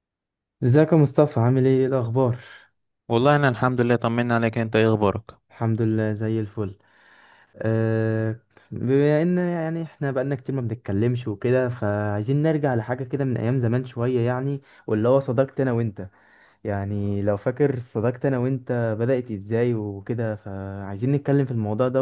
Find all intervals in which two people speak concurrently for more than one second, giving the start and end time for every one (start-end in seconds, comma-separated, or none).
none